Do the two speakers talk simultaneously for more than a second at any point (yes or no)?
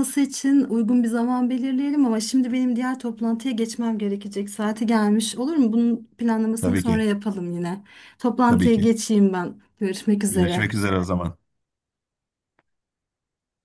no